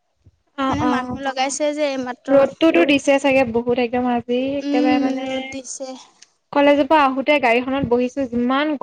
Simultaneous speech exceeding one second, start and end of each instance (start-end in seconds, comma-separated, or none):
none